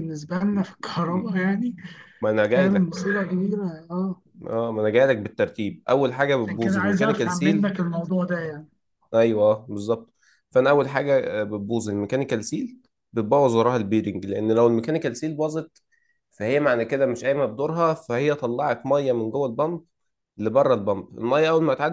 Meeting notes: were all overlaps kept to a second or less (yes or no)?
no